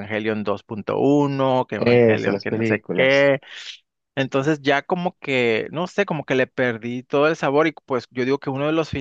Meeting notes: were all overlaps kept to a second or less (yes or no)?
no